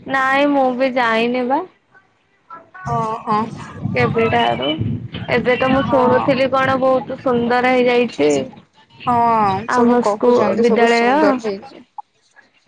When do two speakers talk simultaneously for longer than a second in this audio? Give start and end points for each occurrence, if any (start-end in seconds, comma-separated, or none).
9.8-11.4